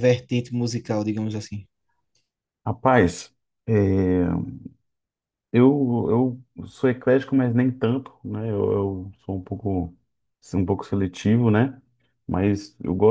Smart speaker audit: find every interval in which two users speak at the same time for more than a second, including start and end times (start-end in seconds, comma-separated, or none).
none